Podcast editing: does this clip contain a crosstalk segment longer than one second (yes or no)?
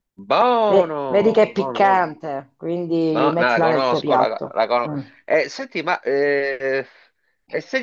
yes